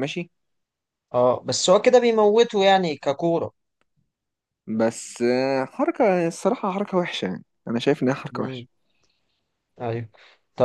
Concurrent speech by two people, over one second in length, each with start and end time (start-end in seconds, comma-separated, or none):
none